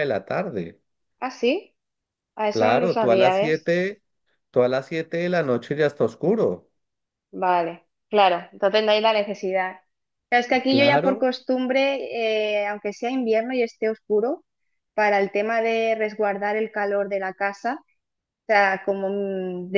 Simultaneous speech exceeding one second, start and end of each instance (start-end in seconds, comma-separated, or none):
2.5-3.7